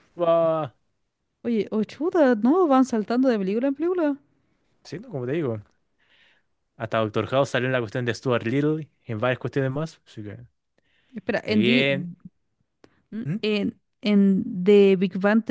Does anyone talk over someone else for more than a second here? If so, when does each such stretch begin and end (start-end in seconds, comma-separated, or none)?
none